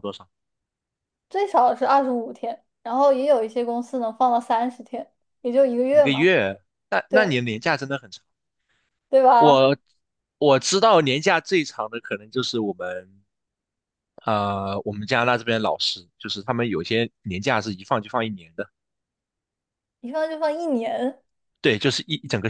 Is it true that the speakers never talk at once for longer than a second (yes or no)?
yes